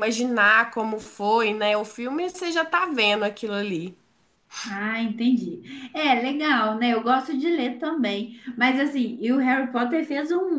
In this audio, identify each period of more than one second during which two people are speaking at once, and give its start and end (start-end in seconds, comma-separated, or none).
none